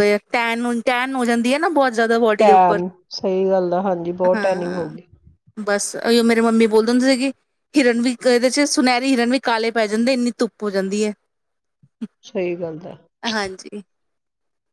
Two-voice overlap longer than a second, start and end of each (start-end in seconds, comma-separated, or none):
none